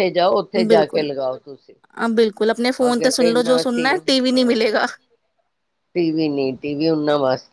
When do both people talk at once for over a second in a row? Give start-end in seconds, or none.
2.9-4.7